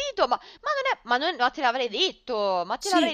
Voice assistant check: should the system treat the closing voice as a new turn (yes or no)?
yes